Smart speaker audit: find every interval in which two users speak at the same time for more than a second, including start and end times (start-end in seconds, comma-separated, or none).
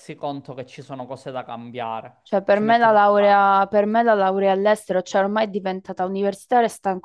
2.2-3.6